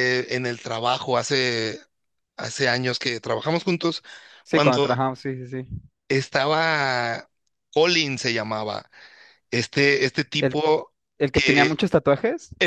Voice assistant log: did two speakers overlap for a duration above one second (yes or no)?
no